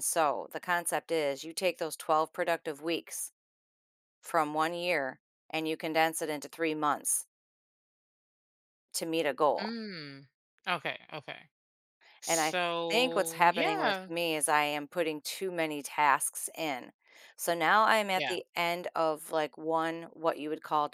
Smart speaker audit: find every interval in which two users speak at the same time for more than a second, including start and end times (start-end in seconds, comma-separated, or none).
12.2-14.1